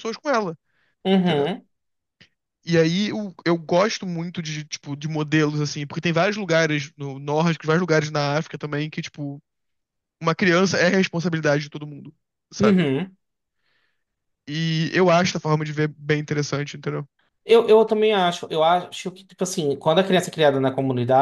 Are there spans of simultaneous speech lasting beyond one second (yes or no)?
no